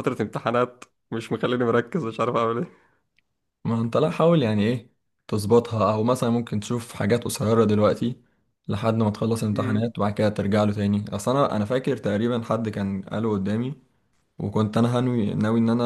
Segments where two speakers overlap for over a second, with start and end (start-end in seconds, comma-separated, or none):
none